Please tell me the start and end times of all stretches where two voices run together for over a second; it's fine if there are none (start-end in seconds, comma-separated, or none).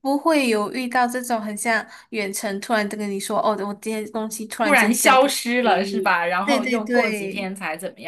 4.6-7.5